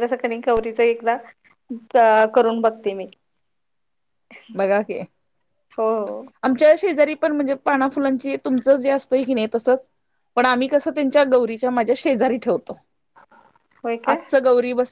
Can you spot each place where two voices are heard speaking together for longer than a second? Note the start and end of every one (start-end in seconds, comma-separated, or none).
none